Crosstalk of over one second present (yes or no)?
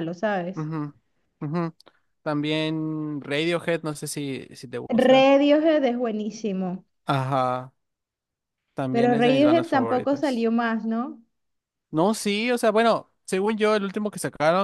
yes